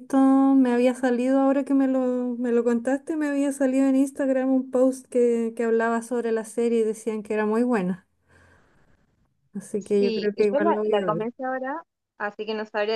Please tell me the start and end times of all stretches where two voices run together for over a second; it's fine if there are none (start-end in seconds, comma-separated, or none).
10.0-11.3